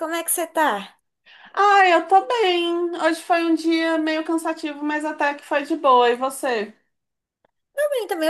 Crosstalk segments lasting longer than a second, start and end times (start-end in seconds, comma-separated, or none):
none